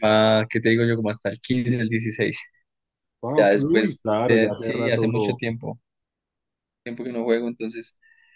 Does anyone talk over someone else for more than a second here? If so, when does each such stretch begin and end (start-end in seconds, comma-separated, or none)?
3.4-5.4